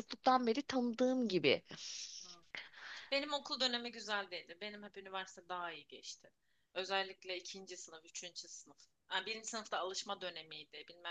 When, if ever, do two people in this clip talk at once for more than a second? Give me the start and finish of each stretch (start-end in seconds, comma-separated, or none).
none